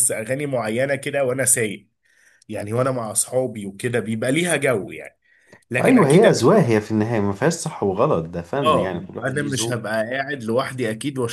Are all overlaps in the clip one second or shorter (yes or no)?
no